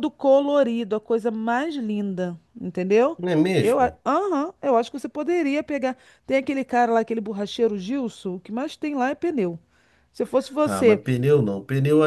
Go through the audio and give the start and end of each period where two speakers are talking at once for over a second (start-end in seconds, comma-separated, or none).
none